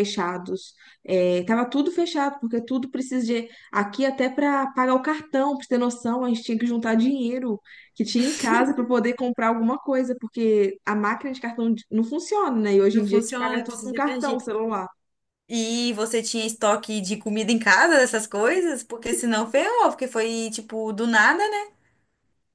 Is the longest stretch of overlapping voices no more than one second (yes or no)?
no